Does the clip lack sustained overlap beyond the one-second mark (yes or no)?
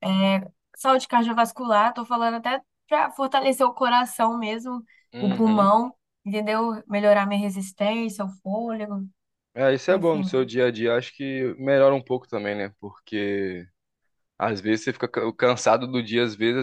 yes